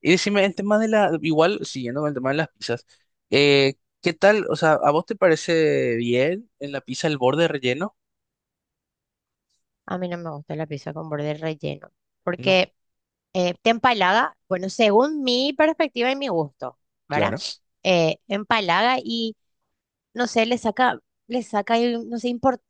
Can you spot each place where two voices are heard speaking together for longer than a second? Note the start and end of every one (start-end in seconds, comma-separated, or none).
none